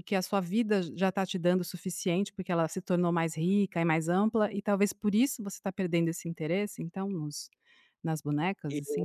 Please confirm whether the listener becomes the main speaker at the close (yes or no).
yes